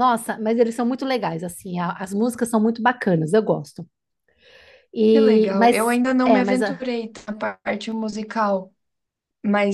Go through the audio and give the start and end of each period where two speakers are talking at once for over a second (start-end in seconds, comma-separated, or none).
5.1-6.8